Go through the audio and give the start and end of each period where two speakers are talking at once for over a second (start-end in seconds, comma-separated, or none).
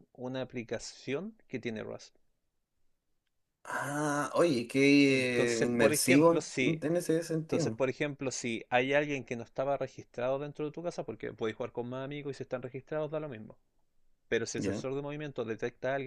5.1-6.8